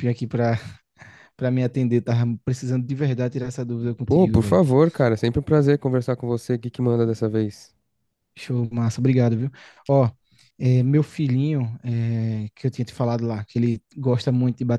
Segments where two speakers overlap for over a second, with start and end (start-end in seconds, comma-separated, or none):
none